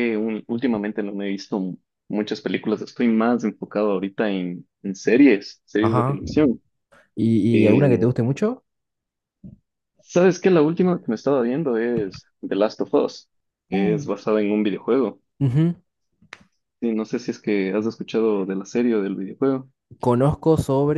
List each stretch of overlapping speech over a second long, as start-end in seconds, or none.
none